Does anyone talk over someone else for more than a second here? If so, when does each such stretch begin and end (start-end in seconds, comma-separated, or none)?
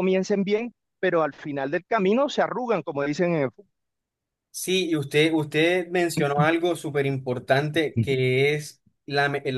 none